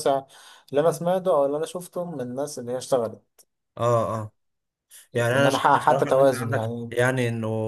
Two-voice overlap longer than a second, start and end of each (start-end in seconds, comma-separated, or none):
5.3-6.9